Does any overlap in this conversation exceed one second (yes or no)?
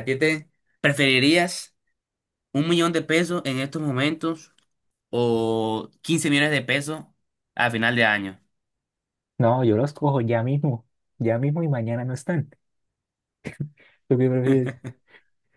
no